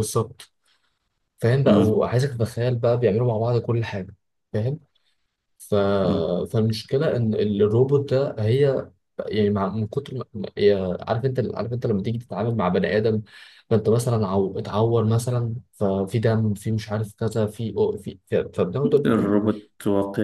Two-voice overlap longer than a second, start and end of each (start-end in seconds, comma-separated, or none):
none